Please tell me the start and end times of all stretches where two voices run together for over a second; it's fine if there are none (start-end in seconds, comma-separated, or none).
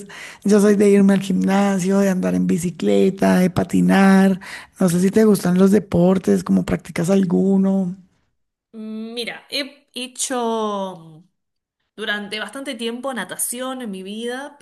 none